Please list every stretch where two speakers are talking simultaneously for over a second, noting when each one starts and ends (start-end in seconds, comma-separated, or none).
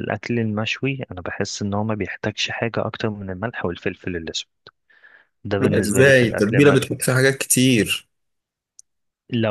5.6-6.9